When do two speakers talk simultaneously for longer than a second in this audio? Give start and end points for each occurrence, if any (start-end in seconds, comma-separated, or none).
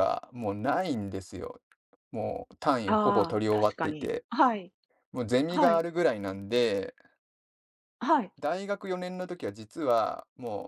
2.9-4.2